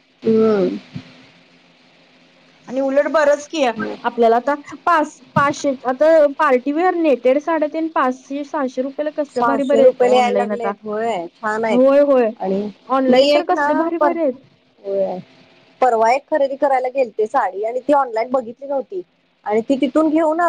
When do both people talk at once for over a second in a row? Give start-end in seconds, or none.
9.4-10.7